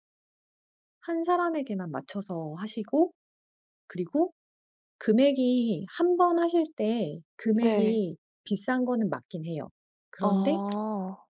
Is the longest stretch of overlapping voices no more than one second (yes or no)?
yes